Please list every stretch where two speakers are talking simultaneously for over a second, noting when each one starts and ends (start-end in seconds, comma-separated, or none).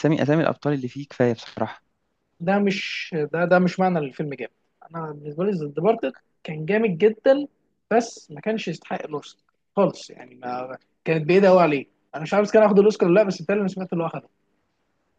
none